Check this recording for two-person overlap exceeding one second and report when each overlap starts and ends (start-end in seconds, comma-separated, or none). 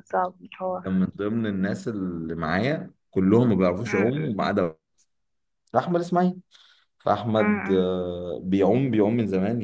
none